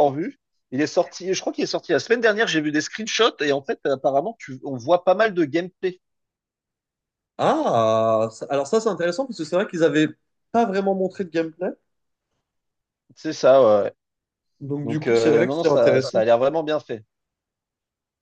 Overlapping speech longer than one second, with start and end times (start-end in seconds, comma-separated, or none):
14.8-16.2